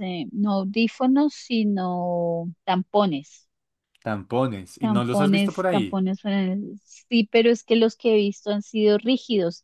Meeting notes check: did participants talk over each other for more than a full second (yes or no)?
yes